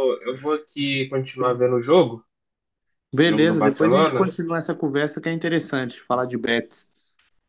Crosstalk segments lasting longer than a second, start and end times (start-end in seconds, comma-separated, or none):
3.2-4.4